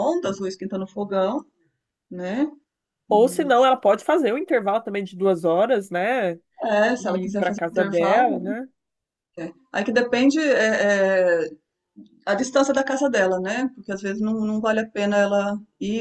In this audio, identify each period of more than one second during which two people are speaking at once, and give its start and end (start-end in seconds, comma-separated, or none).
7.0-8.5